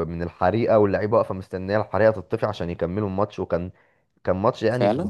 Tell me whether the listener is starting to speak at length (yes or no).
no